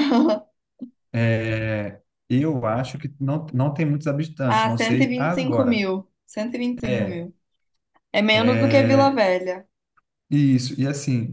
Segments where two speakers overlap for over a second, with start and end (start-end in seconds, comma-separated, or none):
4.5-5.8